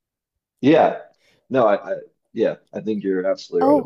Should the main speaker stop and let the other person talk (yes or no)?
yes